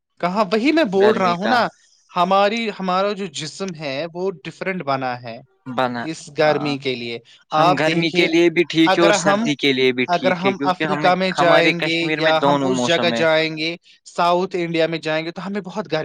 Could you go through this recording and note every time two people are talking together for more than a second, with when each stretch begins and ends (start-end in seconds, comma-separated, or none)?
10.1-13.2